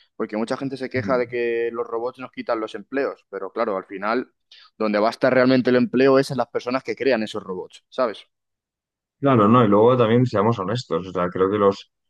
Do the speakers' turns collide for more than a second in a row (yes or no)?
no